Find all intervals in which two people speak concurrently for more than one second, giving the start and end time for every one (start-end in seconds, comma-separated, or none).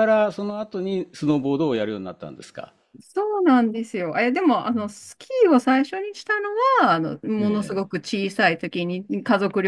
none